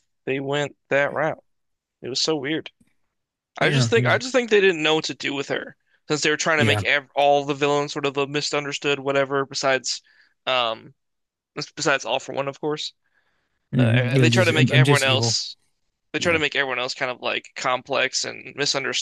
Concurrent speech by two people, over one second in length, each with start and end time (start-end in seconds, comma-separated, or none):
13.8-15.4